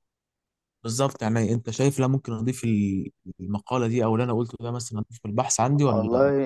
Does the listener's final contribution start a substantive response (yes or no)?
yes